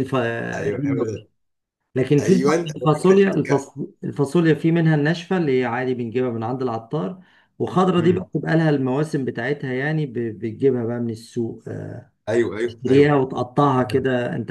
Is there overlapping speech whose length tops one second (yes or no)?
yes